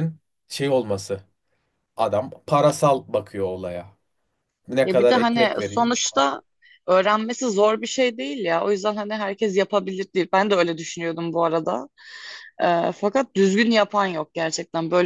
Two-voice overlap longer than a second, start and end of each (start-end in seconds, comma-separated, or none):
4.8-6.2